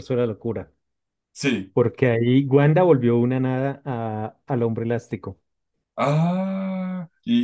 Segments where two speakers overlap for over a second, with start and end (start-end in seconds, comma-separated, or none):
none